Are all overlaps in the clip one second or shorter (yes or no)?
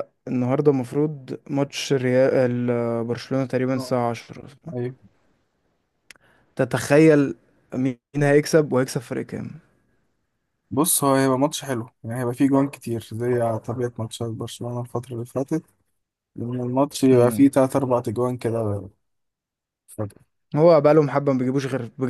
yes